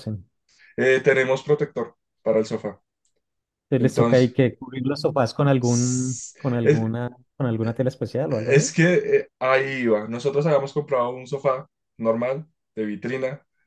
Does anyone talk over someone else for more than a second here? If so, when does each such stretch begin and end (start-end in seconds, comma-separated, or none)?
none